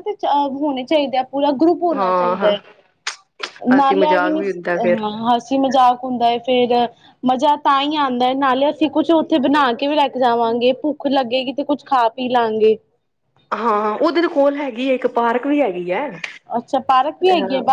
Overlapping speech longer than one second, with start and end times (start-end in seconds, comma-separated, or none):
3.8-5.0